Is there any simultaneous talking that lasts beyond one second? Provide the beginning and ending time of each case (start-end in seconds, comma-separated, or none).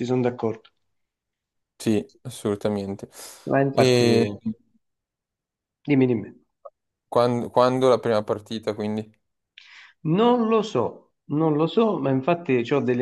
none